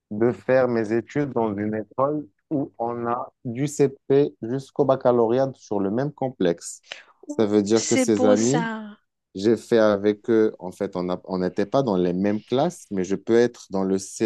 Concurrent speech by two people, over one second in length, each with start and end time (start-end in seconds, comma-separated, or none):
7.3-8.7